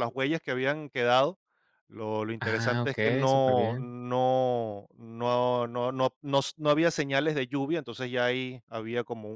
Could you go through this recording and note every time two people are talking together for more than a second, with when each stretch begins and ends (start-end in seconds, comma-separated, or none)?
2.4-3.9